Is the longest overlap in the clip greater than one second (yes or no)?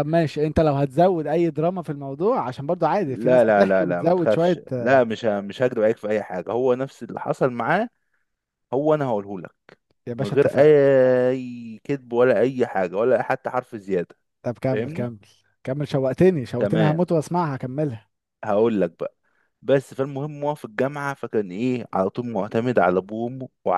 yes